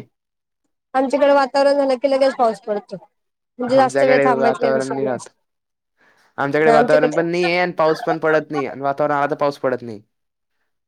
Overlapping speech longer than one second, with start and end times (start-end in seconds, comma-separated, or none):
3.7-5.3